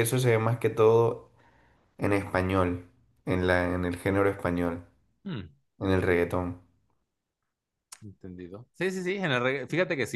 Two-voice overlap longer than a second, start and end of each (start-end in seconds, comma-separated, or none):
none